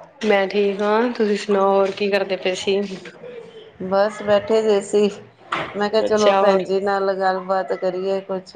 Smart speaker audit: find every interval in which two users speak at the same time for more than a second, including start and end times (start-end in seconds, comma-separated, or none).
none